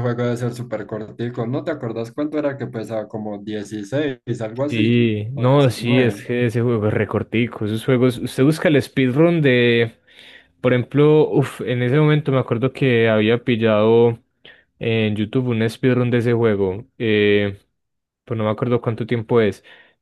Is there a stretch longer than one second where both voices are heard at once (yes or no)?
yes